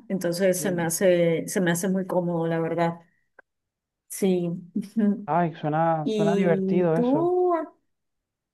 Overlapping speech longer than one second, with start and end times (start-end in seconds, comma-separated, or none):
6.0-7.3